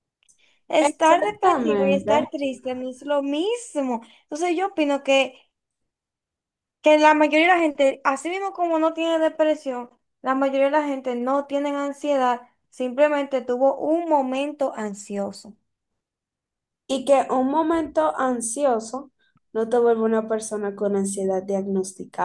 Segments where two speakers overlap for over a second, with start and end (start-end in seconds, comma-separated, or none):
0.9-2.3